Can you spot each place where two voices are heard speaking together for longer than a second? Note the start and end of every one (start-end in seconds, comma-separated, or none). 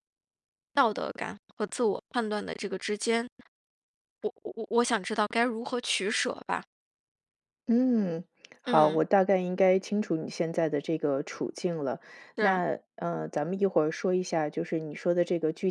none